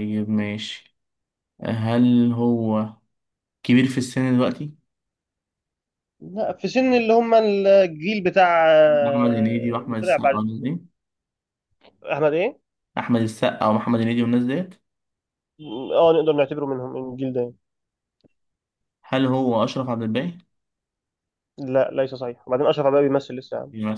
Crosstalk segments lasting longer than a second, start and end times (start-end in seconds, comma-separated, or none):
9.0-10.4